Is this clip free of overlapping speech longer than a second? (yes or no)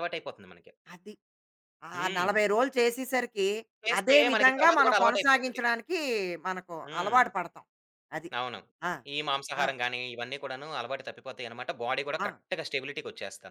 no